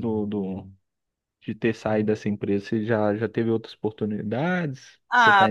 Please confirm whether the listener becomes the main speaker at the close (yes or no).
yes